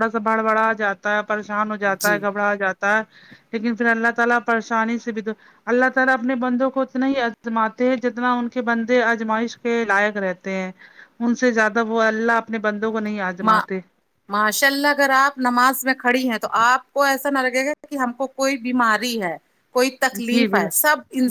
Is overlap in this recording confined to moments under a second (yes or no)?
yes